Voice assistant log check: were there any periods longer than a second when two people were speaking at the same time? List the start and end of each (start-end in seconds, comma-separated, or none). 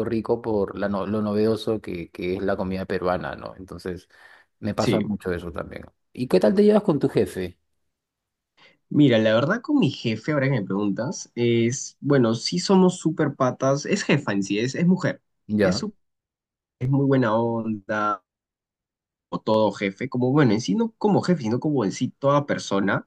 none